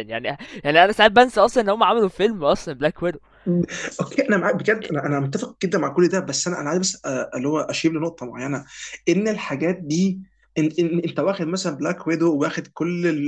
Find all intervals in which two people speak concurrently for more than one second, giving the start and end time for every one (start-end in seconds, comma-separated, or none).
none